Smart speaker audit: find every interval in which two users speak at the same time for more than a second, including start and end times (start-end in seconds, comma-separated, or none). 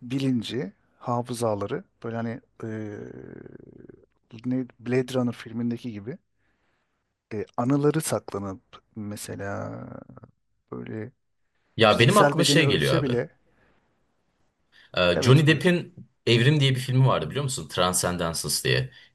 11.8-13.2